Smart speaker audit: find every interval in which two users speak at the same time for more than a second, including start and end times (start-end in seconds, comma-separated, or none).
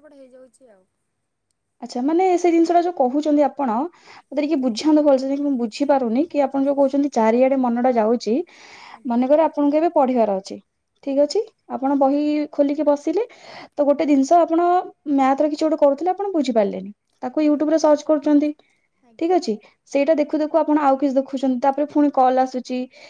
none